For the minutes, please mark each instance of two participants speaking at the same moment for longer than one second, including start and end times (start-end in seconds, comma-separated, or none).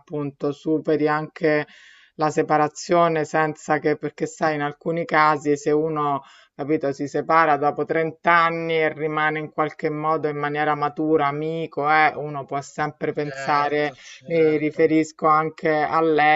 13.2-14.9